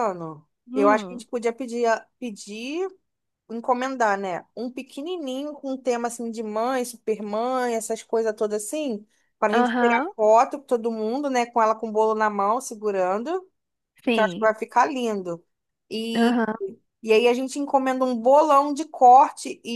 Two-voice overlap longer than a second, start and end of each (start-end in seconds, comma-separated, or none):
none